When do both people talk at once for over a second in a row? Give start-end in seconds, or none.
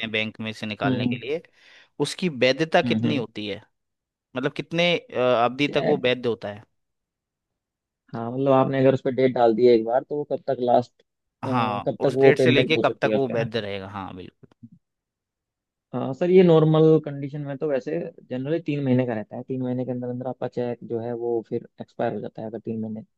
11.5-13.5